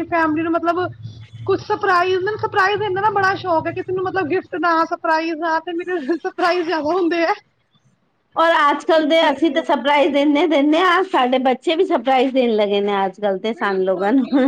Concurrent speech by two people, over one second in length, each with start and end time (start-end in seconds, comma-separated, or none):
none